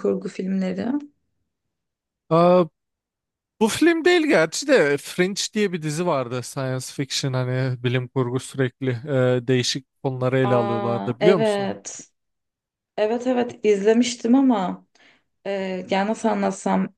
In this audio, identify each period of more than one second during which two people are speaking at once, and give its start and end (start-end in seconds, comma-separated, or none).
10.4-11.8